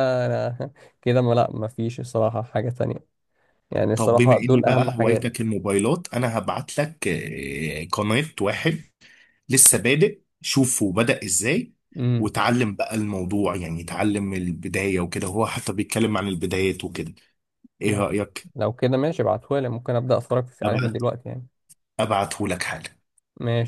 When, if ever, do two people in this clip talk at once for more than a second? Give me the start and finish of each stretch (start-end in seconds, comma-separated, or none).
3.9-5.3